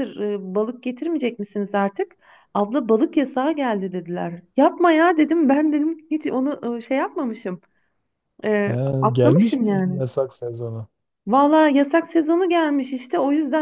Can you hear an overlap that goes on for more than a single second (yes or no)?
yes